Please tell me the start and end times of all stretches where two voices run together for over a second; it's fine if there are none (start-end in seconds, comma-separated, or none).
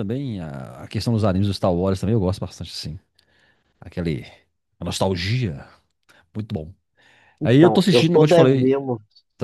7.4-8.8